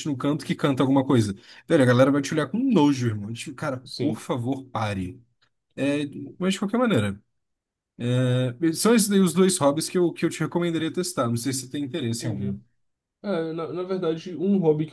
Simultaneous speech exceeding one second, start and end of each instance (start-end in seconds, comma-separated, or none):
none